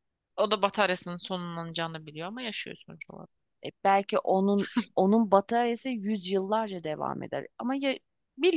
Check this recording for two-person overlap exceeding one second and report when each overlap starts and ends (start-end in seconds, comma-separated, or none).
none